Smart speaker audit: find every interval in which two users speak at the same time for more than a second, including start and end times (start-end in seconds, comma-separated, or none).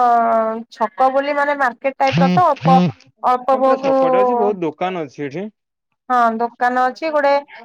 3.5-4.9